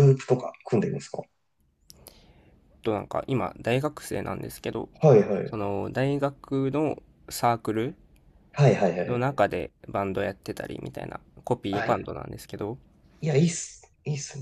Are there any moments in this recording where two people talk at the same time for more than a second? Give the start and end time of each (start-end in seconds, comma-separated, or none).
none